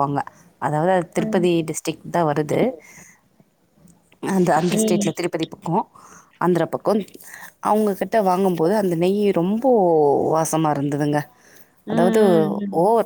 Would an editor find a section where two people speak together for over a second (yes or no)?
no